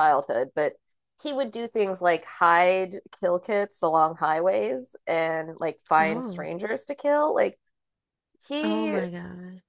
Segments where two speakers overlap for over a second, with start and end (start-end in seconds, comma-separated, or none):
none